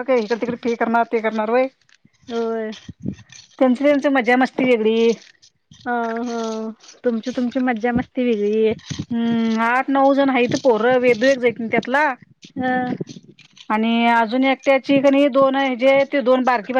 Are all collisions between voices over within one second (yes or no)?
yes